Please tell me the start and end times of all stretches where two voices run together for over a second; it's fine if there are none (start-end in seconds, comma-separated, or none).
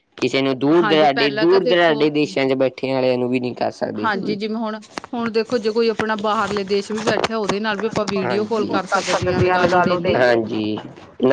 0.8-2.0